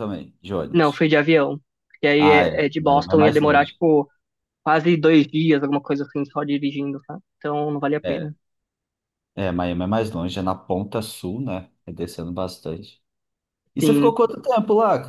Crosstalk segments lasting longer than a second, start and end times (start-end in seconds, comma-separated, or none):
2.2-3.8